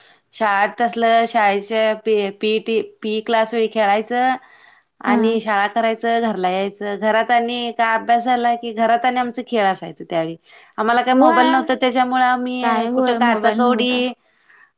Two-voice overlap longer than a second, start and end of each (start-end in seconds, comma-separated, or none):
12.6-14.0